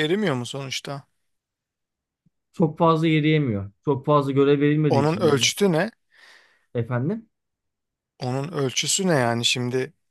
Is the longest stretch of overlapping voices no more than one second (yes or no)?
yes